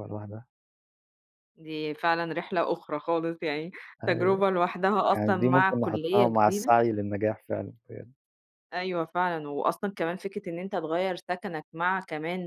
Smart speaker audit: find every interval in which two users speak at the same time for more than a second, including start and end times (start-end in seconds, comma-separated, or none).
5.1-6.7